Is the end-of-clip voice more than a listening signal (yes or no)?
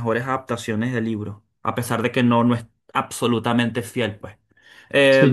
yes